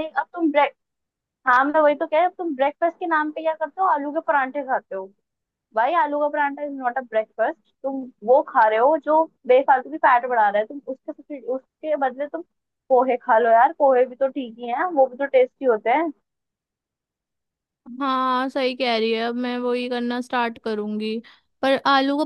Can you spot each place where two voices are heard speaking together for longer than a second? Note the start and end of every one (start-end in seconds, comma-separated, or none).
none